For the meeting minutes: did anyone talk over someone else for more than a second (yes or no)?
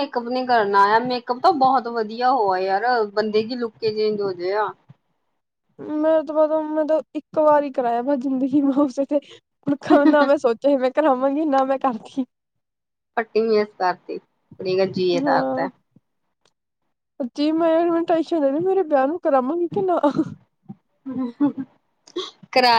no